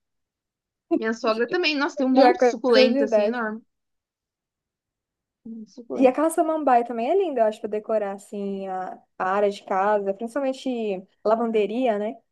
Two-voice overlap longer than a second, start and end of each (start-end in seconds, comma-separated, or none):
2.1-3.4